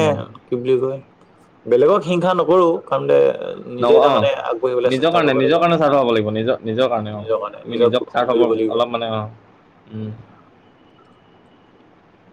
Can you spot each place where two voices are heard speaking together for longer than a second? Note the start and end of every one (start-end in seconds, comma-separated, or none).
3.8-5.6